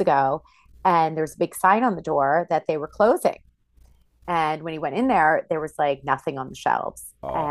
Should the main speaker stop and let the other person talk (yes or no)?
no